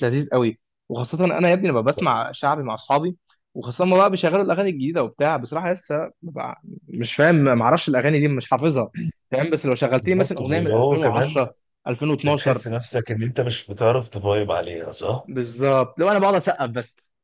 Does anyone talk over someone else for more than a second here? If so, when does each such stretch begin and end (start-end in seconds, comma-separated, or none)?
10.0-11.4